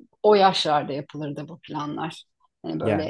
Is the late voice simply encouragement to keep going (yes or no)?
yes